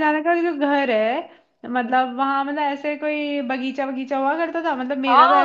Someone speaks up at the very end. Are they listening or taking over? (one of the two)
taking over